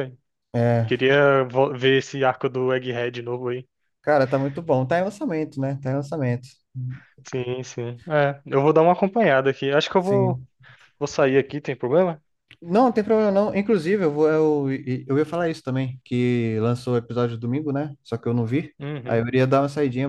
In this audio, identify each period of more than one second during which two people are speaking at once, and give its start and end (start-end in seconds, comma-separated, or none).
none